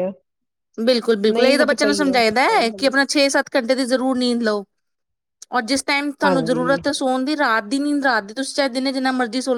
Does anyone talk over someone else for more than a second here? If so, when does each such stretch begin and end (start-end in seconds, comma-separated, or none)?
1.3-3.0